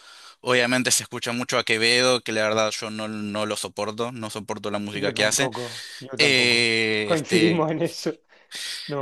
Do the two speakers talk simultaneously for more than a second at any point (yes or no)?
yes